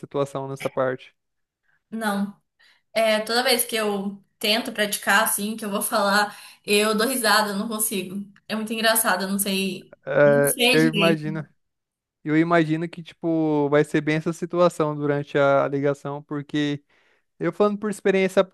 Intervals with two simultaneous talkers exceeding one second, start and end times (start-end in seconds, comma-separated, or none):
10.1-11.4